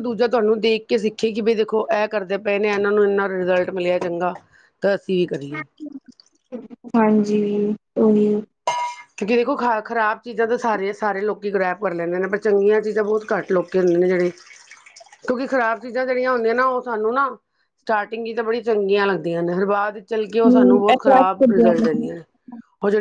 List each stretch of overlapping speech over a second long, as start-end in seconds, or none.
20.3-22.1